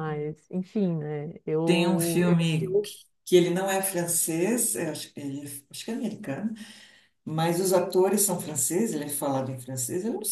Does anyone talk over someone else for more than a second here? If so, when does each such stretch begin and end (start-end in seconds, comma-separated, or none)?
1.6-3.0